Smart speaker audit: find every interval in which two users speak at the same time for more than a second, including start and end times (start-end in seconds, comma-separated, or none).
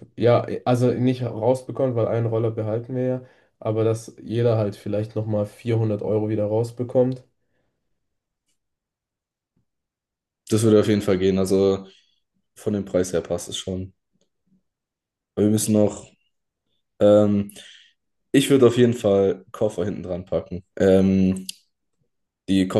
none